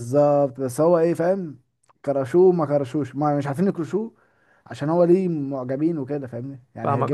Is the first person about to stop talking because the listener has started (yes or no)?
yes